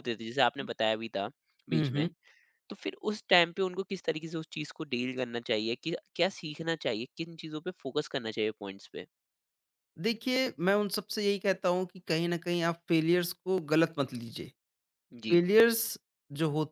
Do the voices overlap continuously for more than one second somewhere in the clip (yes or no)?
no